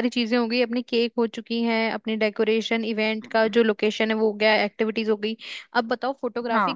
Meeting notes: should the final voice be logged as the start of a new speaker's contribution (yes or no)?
no